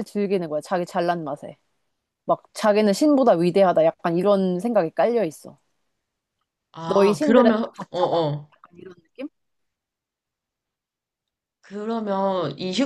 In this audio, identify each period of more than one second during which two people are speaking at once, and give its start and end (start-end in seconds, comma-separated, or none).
6.8-8.5